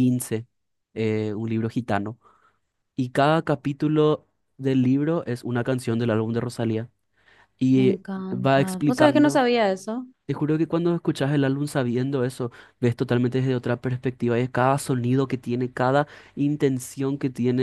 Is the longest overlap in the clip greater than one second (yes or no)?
yes